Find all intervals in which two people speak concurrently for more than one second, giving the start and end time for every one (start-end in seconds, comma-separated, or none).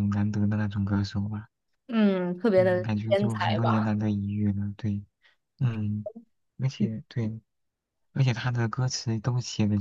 2.6-4.0